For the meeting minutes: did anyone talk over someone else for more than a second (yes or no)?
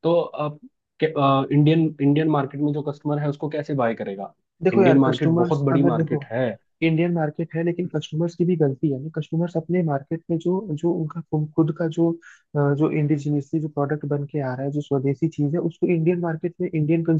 yes